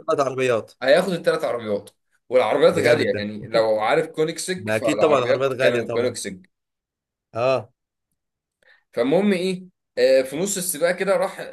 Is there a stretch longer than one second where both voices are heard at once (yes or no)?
yes